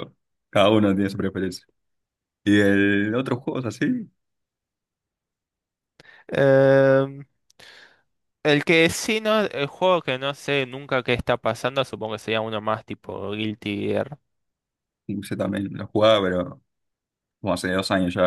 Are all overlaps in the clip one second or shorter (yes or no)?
yes